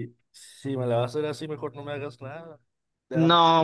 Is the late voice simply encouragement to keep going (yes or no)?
no